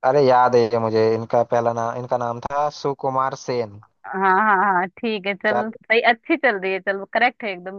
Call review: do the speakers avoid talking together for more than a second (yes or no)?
yes